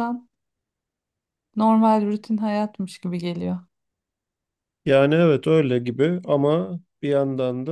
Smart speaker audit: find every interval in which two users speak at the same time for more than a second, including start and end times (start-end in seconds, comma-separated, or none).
none